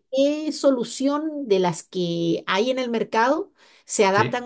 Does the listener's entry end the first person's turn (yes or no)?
no